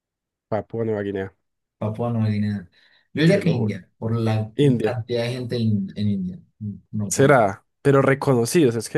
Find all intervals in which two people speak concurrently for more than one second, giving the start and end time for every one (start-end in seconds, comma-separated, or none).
none